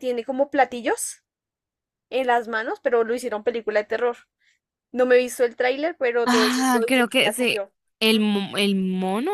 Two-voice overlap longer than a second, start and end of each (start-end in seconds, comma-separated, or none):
6.2-7.7